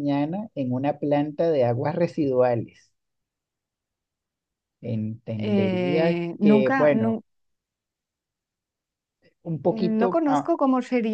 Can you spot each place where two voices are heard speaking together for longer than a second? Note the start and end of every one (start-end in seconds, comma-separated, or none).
5.4-7.2